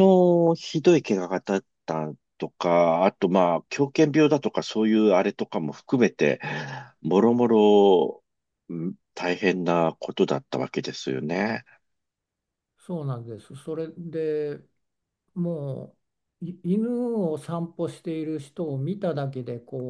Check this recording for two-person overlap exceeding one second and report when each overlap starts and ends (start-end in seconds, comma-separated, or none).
none